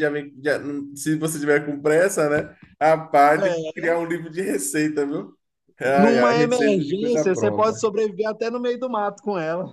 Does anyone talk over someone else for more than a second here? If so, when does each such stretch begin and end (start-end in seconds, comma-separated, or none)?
5.8-7.8